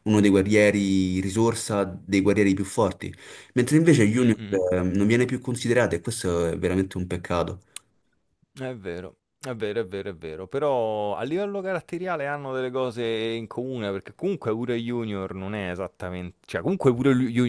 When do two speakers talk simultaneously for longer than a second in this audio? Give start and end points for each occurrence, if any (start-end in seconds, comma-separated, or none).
none